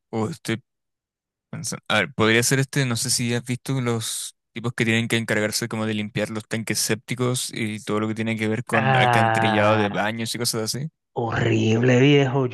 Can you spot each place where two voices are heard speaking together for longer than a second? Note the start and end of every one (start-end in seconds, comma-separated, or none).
8.7-10.1